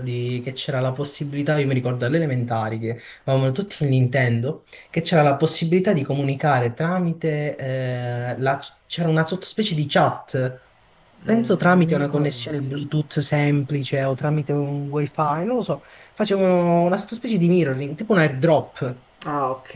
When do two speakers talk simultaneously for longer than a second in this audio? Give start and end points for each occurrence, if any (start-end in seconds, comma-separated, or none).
11.3-12.6